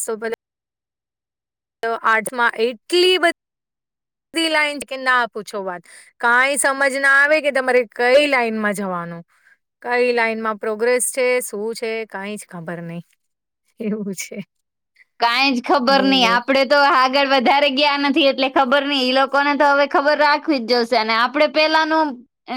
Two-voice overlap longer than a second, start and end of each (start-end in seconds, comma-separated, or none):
none